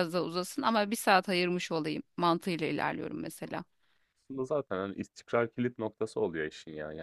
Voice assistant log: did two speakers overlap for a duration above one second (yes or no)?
no